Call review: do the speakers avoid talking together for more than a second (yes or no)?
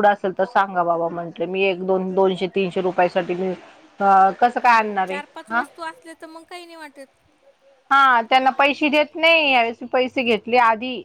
yes